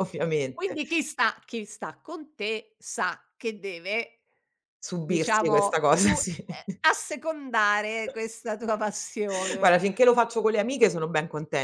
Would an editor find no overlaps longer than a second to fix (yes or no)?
no